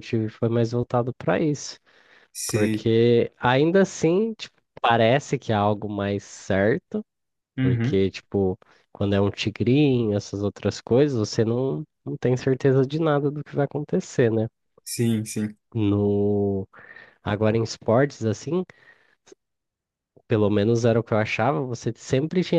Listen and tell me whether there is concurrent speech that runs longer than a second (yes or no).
no